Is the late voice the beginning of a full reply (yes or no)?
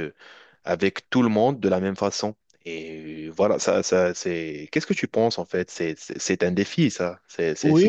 yes